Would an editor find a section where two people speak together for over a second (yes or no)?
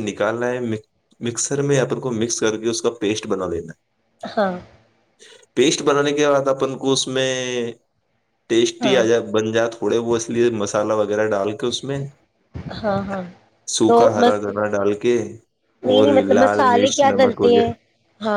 yes